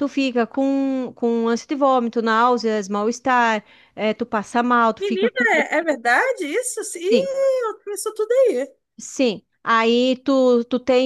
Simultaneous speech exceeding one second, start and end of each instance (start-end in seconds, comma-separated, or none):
none